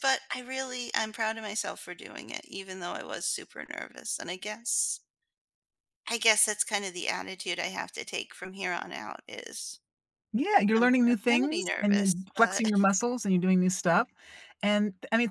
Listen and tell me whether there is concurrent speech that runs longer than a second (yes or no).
yes